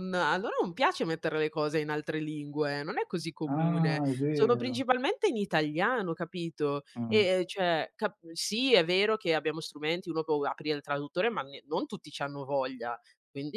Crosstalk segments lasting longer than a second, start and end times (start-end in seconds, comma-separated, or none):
3.4-4.8